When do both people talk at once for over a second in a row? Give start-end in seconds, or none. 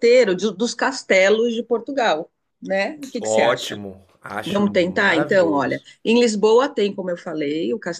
4.4-5.9